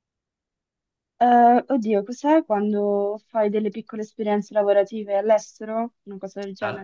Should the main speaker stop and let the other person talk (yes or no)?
yes